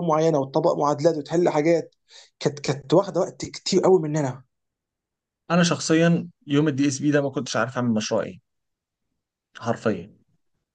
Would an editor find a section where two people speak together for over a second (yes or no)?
no